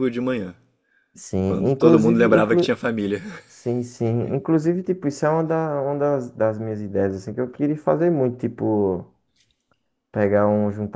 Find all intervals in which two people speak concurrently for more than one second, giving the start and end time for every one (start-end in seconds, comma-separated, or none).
1.4-2.7